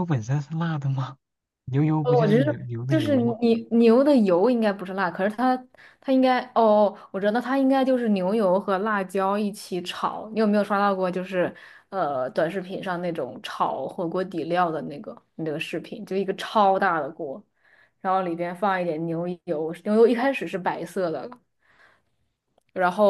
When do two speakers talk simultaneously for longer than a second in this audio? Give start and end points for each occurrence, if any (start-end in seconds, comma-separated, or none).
2.0-3.4